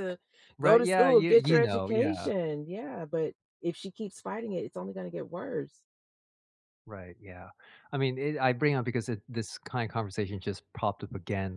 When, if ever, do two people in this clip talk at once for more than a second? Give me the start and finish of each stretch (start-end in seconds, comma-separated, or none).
0.6-2.3